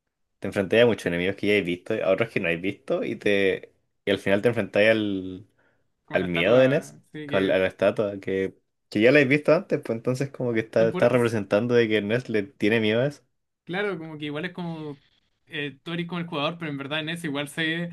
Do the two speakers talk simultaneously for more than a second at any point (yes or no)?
yes